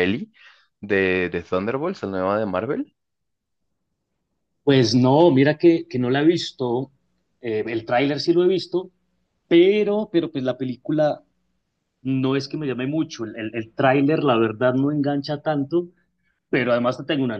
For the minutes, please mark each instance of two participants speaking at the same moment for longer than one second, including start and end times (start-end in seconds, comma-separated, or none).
none